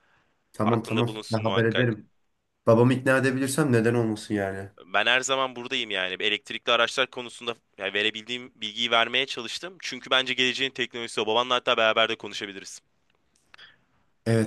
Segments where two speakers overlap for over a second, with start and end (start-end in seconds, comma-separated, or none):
0.6-2.0